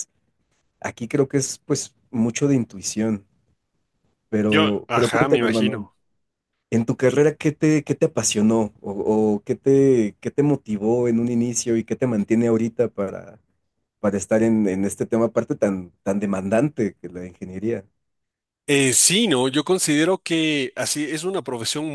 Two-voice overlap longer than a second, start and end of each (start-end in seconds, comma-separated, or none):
4.5-5.8